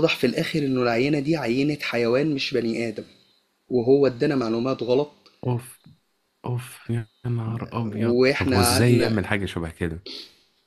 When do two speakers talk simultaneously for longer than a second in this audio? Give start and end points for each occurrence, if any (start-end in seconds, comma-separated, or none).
7.9-9.2